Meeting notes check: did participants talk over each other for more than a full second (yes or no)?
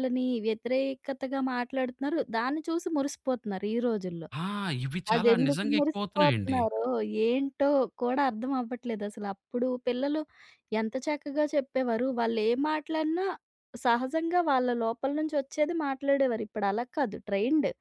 yes